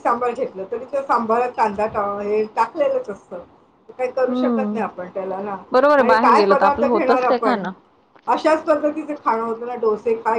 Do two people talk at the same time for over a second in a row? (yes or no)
yes